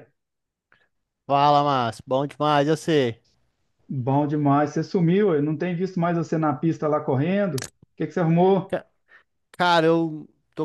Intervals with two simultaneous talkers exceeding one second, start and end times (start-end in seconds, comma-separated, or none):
none